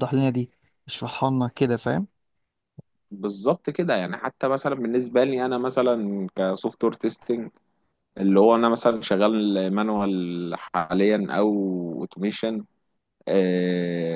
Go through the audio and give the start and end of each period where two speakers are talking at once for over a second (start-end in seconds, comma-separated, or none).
none